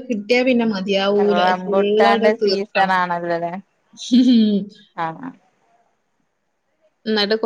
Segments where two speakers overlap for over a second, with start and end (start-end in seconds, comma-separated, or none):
1.4-3.0